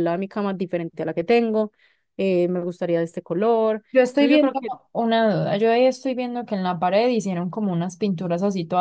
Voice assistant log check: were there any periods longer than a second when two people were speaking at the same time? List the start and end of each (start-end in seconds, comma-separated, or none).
none